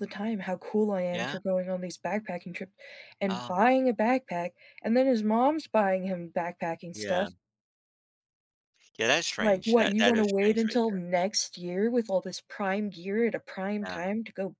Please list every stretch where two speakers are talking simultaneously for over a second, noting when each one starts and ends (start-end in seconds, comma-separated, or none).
9.4-11.0